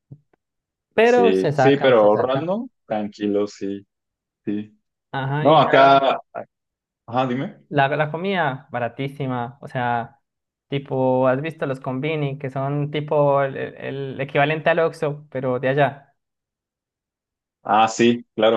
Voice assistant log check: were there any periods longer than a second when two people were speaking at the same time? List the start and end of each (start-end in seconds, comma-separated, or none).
1.0-2.6